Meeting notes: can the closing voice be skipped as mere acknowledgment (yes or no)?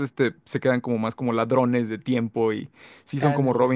yes